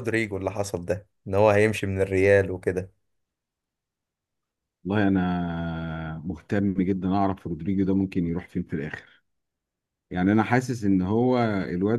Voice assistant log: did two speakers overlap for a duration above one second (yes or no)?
no